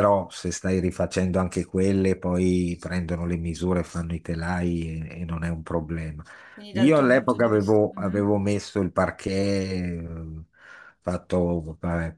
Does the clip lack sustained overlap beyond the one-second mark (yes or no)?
no